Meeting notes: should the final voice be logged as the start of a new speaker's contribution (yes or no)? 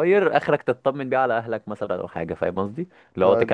no